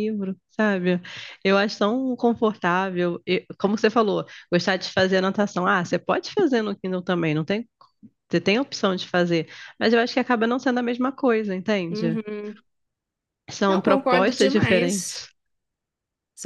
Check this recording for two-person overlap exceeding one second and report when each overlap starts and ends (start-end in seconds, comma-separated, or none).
13.7-15.3